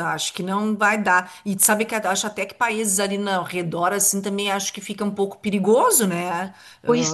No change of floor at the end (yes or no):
no